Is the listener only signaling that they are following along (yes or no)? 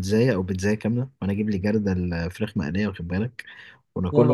yes